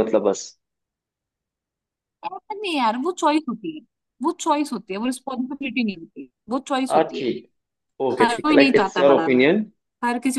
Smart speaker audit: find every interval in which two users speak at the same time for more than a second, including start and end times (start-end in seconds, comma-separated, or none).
8.2-9.5